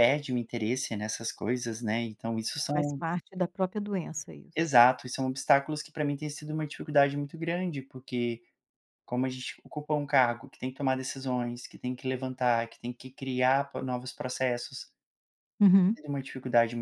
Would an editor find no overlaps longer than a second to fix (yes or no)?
yes